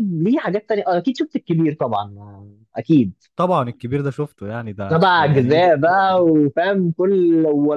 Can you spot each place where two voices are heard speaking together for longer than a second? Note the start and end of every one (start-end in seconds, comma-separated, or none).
4.9-6.3